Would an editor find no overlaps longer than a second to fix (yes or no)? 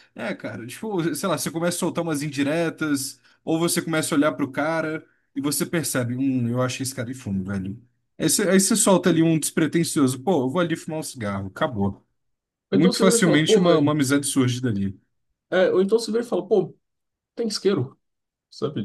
no